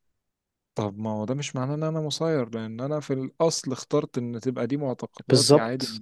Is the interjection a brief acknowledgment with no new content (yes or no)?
yes